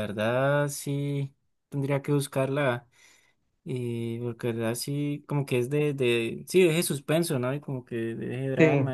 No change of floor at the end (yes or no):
yes